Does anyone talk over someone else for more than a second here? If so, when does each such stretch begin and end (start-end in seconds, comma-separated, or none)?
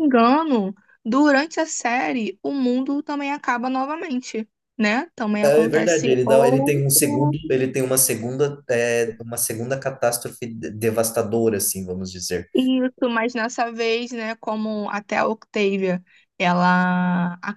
5.4-7.4